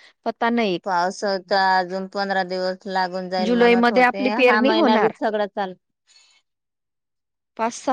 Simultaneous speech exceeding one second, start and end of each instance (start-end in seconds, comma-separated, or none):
3.5-5.1